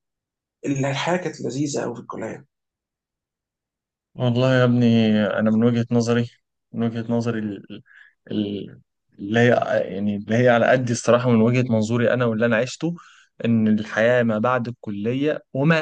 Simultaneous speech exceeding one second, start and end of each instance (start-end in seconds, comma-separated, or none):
none